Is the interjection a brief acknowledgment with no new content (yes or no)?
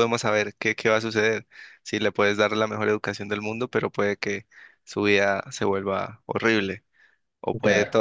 yes